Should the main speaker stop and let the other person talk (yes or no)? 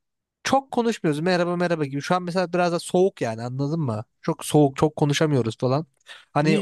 yes